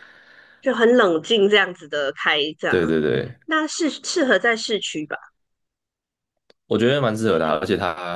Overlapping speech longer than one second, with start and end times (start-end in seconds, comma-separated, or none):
none